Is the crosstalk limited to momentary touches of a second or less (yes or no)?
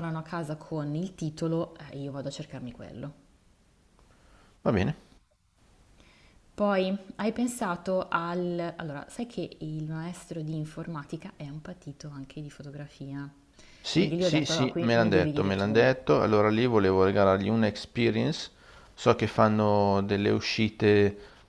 no